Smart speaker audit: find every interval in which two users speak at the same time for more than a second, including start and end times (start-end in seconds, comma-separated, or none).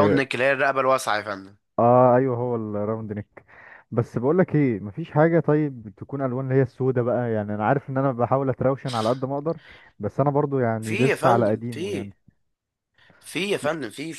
10.8-12.1